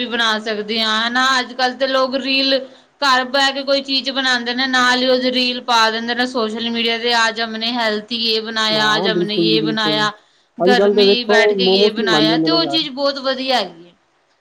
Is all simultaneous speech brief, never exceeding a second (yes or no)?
no